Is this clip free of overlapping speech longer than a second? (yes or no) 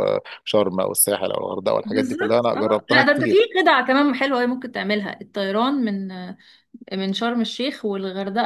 no